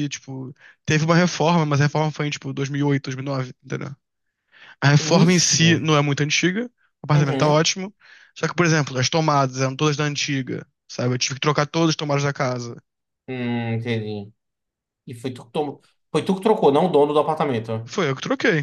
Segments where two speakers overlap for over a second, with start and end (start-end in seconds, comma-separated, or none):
none